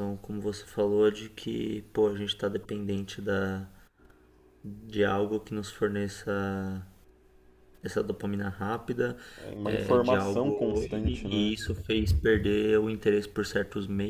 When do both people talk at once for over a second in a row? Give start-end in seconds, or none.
9.6-11.5